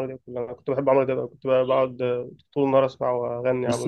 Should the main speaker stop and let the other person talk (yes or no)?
yes